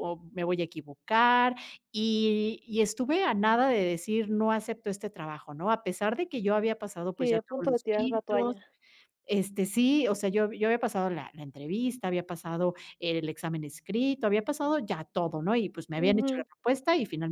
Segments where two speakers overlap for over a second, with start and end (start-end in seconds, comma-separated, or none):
7.2-8.6